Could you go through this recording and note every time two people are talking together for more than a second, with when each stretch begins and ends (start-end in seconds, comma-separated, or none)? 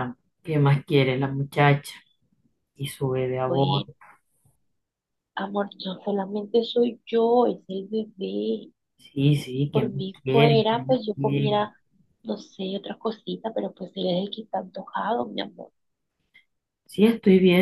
9.7-11.6